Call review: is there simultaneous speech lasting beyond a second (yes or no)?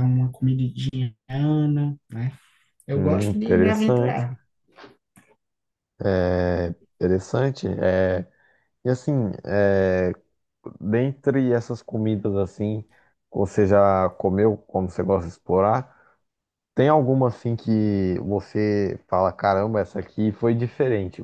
yes